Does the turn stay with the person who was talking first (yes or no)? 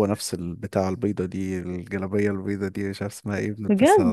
yes